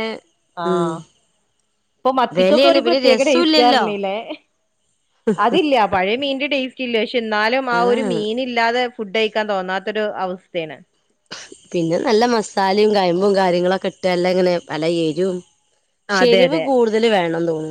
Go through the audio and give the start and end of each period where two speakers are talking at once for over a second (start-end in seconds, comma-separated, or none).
2.4-3.8